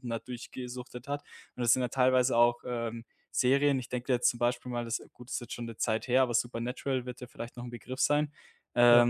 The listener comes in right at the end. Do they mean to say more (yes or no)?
no